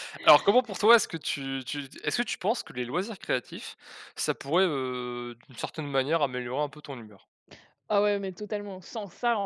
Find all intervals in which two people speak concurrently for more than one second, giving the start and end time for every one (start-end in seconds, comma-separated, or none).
none